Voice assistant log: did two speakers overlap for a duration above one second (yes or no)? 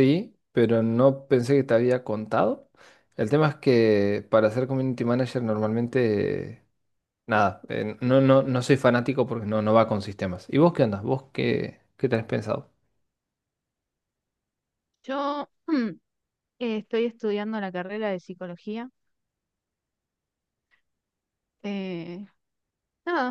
no